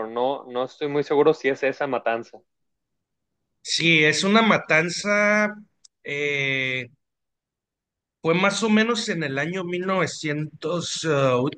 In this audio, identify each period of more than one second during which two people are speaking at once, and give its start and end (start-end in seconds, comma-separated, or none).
none